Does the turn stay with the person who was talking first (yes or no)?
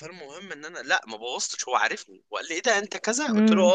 yes